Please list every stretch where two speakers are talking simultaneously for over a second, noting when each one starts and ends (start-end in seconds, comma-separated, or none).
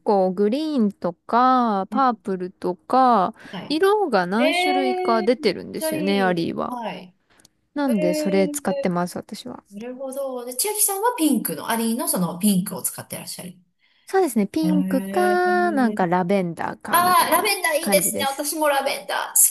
4.4-6.8, 14.6-16.1, 16.9-18.5